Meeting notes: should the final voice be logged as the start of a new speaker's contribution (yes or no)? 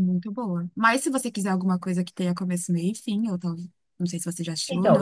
yes